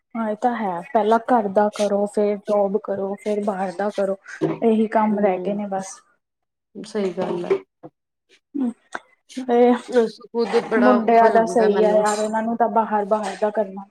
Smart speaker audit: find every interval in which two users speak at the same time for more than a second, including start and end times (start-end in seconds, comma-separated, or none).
10.0-12.1